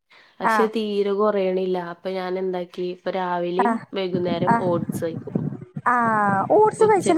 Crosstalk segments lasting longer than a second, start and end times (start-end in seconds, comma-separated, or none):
none